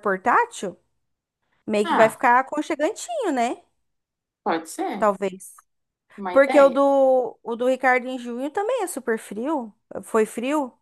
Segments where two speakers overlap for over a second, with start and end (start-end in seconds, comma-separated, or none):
none